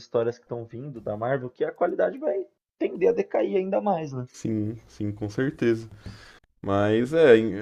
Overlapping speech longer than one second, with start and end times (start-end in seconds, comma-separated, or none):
none